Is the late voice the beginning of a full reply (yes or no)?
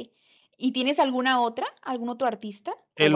yes